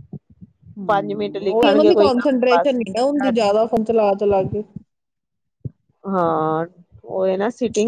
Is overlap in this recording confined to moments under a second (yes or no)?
no